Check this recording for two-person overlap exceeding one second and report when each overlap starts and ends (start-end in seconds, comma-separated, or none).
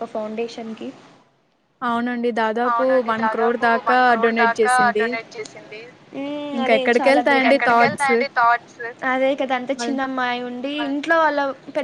6.6-8.1